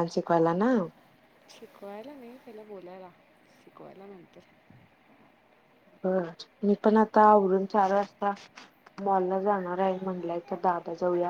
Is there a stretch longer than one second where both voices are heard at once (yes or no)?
no